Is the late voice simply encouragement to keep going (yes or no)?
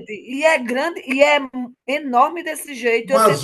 no